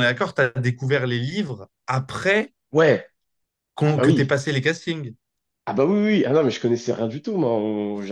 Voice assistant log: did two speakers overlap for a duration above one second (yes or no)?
no